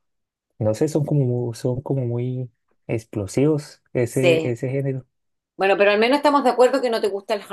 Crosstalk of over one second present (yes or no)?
no